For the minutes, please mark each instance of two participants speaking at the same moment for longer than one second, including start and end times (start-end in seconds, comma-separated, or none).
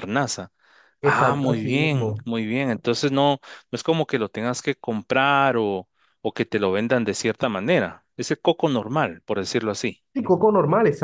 1.0-2.3